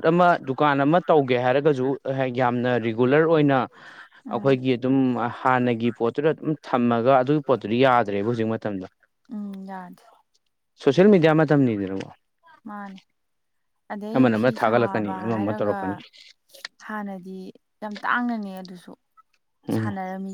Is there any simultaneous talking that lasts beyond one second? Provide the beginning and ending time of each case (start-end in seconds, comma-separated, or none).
14.1-15.8